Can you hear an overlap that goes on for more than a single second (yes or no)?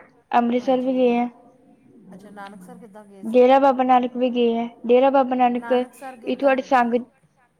yes